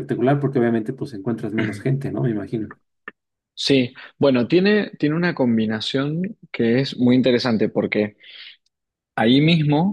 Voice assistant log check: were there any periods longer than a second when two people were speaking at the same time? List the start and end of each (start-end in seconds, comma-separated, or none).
none